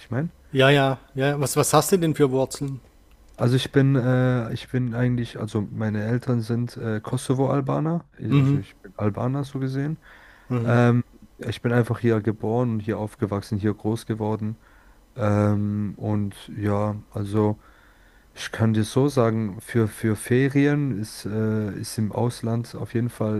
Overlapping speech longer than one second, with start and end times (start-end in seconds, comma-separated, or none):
none